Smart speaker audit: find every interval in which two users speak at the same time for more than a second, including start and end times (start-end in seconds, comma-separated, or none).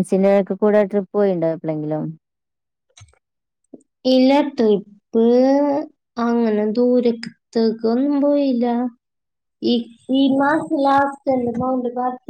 none